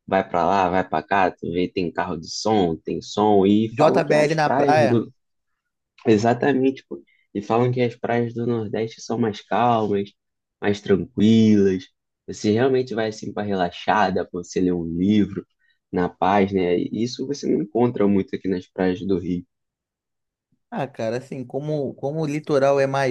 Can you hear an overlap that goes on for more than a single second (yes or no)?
yes